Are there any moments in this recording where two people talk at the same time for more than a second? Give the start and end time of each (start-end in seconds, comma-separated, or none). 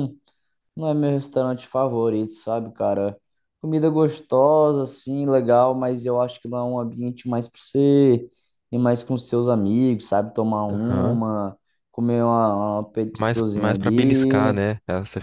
13.2-14.6